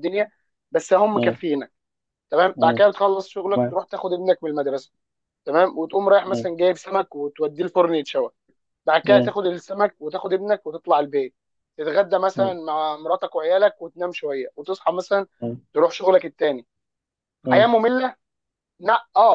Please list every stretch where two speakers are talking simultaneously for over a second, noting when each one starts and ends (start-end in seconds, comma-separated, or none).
none